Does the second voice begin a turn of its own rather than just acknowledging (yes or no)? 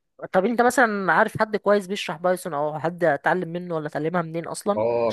yes